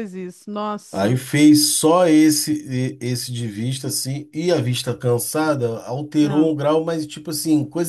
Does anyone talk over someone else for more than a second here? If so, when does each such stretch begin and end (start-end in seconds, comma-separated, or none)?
none